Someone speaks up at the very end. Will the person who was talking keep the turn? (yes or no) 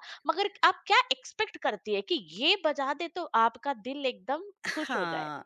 no